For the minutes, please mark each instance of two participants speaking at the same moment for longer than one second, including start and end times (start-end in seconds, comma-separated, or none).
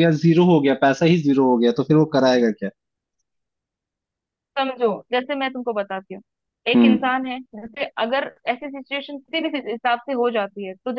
none